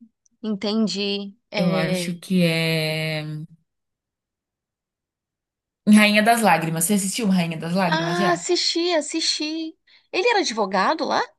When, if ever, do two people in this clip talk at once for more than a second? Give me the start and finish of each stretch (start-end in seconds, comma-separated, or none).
none